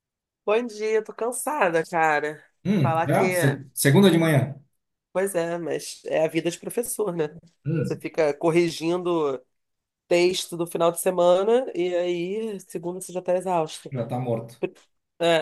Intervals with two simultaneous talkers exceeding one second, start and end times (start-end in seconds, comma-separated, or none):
none